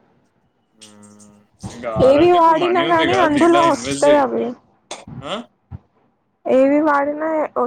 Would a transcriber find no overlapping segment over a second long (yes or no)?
no